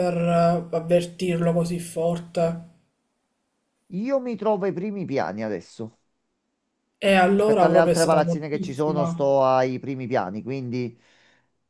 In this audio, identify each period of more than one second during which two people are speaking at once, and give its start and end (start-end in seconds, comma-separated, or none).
7.3-9.3